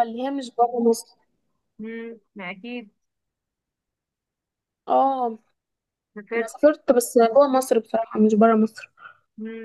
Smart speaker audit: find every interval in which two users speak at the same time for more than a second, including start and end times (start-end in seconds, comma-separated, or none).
none